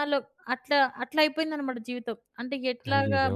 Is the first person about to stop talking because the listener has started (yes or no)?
no